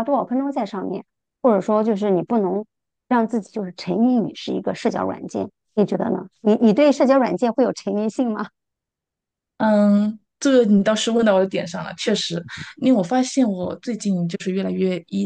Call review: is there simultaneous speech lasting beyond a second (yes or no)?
no